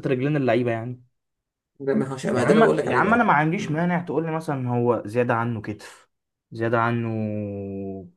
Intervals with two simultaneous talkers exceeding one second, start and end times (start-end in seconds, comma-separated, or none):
2.4-3.8